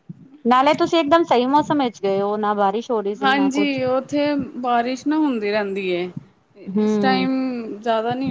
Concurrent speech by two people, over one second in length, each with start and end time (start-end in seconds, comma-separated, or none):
none